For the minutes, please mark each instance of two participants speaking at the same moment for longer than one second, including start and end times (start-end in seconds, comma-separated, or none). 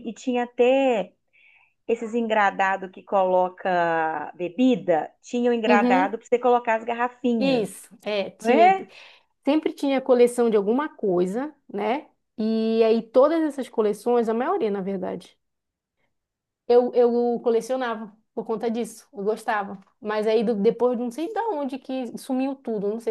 none